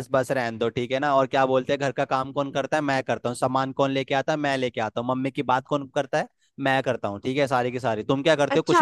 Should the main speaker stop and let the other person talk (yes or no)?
yes